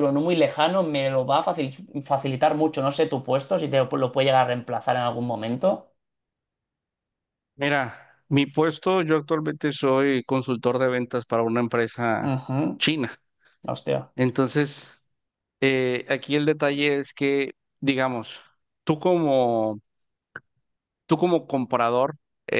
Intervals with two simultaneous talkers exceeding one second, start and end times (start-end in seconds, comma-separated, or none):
none